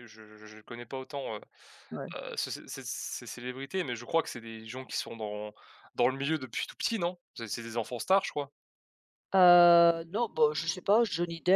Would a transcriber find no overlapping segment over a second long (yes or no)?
yes